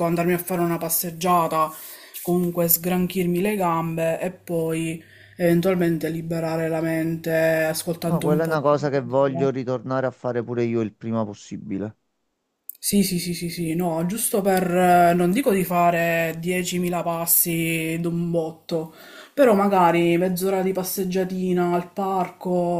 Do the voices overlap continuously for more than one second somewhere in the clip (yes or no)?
yes